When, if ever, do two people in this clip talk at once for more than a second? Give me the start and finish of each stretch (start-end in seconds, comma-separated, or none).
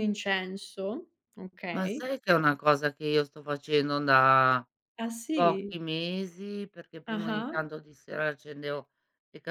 none